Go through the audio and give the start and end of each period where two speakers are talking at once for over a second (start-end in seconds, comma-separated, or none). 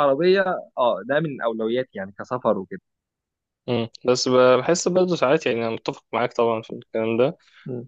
none